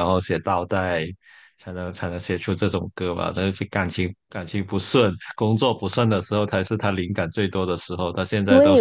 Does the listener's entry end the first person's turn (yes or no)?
yes